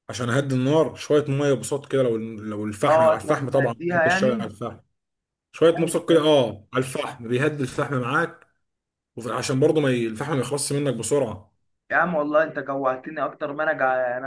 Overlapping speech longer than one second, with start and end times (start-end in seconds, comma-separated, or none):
2.9-4.5